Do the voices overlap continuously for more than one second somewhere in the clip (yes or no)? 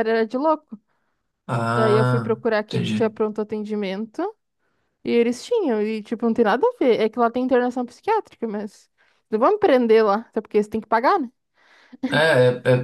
yes